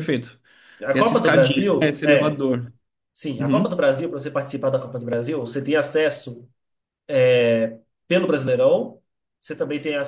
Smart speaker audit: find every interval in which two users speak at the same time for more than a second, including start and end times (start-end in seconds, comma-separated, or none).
0.9-2.4